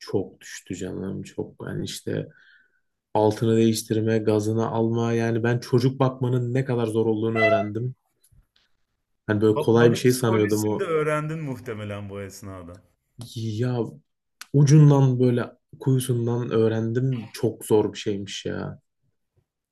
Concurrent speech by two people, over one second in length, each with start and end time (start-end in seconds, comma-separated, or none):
9.5-10.9